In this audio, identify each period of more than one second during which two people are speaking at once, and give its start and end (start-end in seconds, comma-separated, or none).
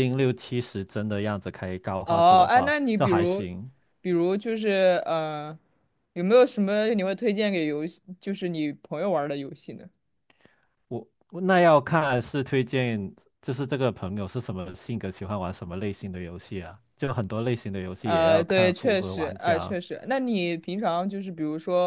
2.0-3.5, 18.0-19.8